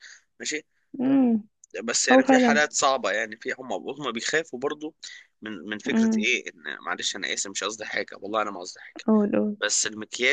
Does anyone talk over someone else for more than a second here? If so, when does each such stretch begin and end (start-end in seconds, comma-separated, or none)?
none